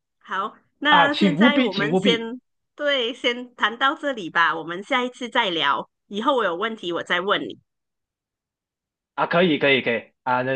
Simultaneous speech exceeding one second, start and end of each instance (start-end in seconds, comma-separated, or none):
0.9-2.3